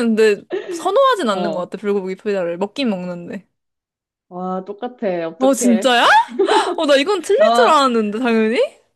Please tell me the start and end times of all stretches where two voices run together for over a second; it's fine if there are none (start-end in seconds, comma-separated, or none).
none